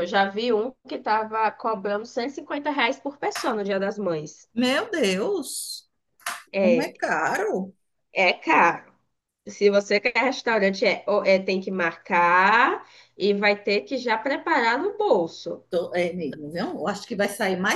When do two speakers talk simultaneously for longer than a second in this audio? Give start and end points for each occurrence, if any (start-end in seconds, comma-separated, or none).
none